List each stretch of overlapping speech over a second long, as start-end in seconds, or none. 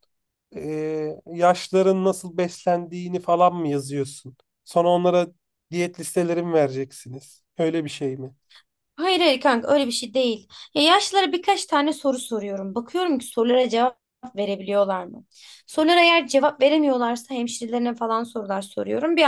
none